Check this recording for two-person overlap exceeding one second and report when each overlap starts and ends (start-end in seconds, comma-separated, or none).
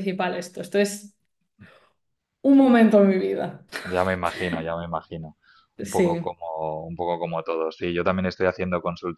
none